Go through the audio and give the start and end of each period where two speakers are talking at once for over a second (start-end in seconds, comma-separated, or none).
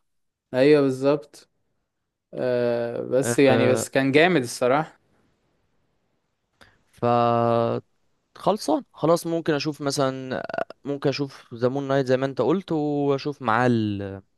none